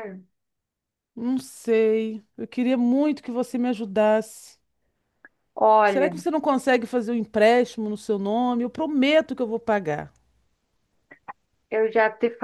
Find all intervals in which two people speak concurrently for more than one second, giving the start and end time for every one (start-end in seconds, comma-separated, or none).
none